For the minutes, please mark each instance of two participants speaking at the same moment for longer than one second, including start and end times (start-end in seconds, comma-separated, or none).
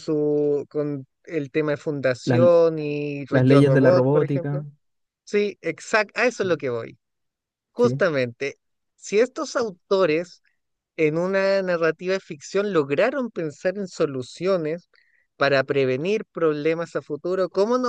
3.3-4.6